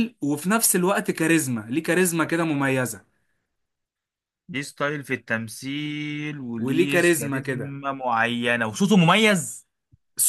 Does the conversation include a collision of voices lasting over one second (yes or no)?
yes